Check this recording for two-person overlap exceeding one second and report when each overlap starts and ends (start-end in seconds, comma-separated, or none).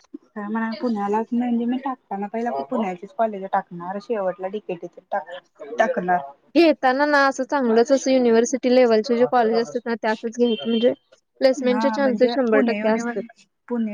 11.7-13.2